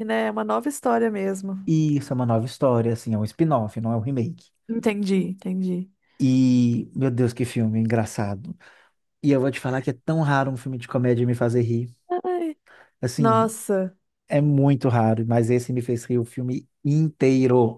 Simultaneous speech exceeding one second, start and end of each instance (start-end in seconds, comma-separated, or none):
none